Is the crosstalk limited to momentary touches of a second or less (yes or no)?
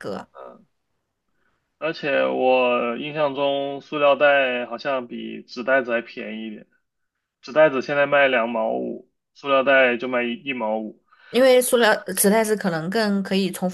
yes